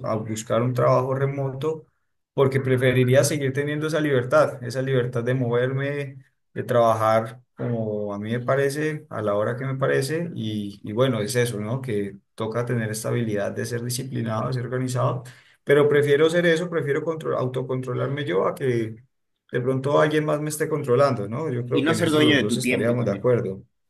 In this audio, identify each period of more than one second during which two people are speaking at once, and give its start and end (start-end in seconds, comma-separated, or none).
21.7-23.3